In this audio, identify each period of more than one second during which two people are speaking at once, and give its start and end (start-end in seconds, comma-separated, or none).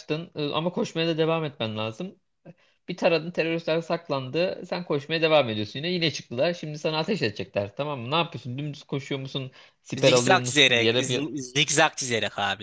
10.0-11.2